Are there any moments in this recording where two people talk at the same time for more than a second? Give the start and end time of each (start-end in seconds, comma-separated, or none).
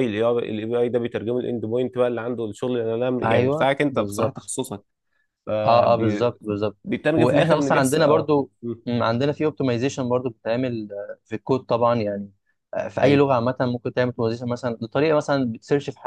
3.2-4.5, 7.1-8.5